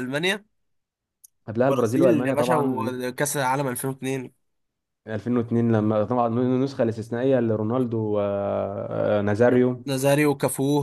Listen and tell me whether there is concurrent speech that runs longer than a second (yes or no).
yes